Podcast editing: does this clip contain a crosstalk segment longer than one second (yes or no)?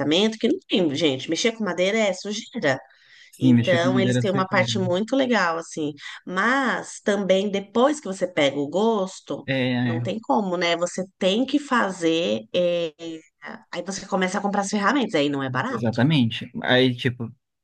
yes